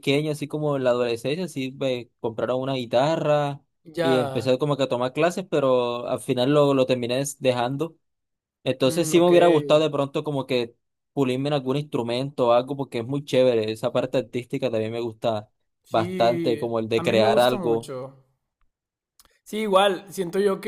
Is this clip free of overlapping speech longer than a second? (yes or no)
no